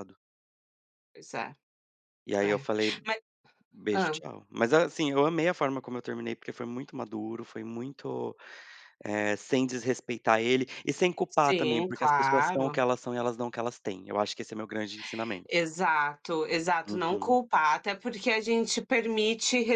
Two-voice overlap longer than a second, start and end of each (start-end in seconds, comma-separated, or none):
11.4-12.8